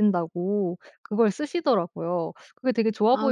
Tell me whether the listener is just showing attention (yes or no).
no